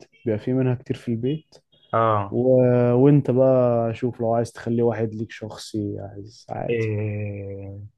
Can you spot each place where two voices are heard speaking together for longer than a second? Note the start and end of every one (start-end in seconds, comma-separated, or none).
none